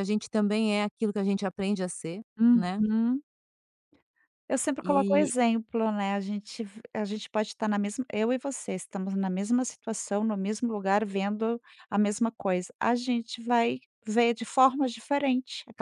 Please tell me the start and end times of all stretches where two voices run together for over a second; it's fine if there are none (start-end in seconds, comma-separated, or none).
none